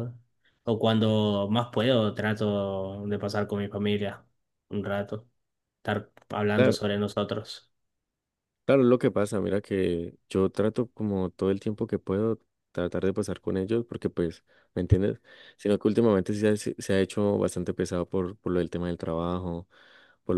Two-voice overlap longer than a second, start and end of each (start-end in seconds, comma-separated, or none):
none